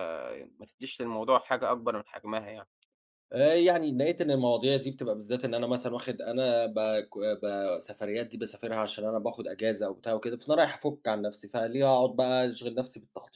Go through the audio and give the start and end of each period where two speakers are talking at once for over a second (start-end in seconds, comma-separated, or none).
none